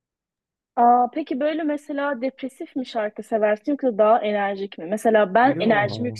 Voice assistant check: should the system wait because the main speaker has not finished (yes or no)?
yes